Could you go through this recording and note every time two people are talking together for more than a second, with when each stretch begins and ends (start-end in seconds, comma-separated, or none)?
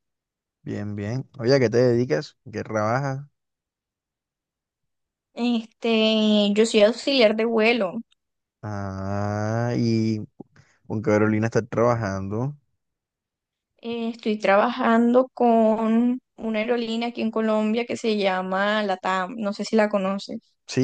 none